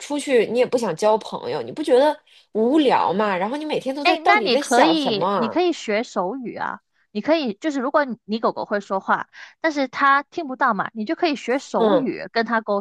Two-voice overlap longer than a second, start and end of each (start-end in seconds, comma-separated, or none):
4.0-5.6